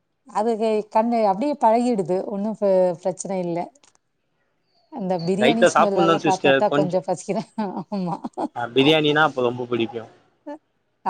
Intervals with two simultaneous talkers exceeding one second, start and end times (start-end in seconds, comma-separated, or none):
5.4-6.9